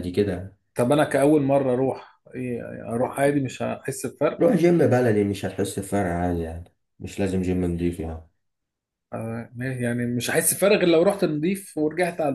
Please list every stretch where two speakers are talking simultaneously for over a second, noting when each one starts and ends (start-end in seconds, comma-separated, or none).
none